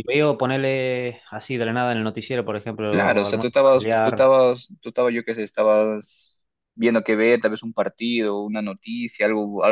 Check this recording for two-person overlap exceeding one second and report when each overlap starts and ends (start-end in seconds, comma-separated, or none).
2.9-4.3